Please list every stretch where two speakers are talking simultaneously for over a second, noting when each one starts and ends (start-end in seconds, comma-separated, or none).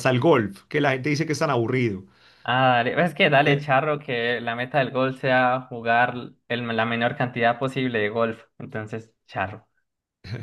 none